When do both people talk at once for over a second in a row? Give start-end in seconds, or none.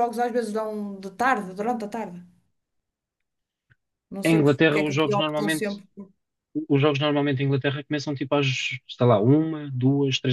4.2-5.8